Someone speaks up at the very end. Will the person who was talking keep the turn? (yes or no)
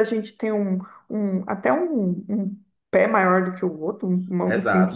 no